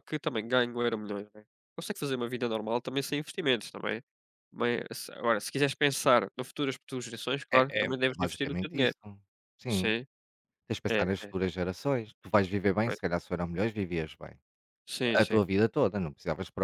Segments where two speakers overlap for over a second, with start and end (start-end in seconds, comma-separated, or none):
7.5-8.9